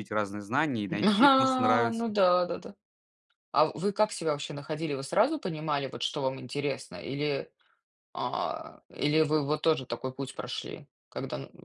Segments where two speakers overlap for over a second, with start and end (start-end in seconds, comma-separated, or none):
0.9-2.1